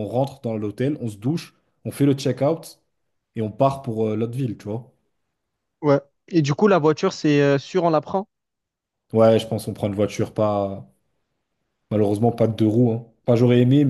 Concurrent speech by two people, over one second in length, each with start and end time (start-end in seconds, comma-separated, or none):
none